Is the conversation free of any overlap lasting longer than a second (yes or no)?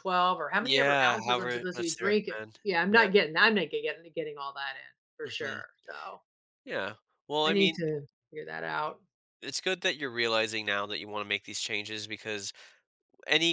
no